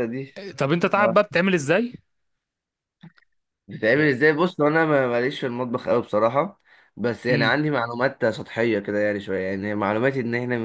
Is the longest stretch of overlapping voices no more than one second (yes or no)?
yes